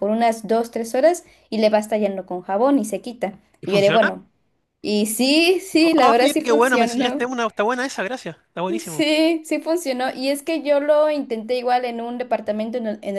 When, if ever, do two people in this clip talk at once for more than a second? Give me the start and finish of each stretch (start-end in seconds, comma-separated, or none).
6.0-7.3